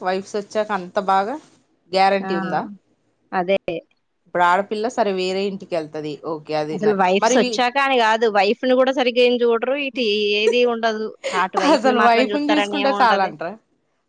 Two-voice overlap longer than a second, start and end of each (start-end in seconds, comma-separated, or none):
11.8-13.3